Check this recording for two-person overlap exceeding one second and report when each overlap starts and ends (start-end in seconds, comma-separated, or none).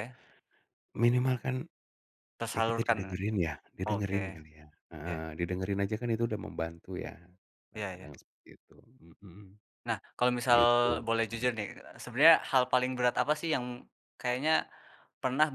none